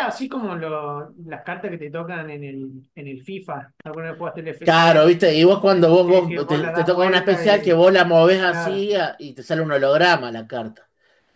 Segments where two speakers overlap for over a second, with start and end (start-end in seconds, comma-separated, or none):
6.0-7.8